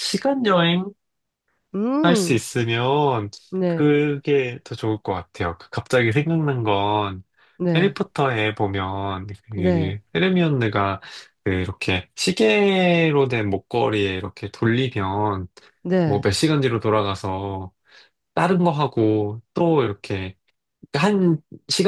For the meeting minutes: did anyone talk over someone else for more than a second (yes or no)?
no